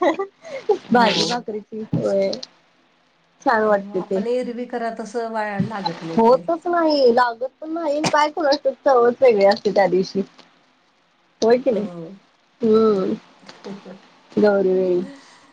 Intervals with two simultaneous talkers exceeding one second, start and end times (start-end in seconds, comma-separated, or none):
none